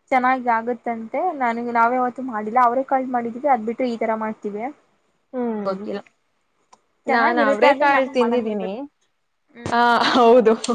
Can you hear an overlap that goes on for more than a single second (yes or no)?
yes